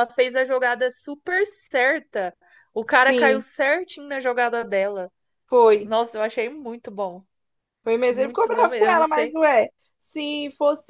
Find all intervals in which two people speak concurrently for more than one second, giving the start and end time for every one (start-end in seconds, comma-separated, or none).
8.1-9.4